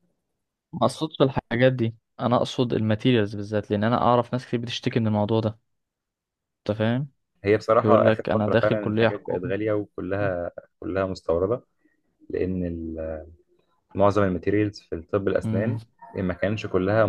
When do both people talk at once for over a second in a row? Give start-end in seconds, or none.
7.8-9.5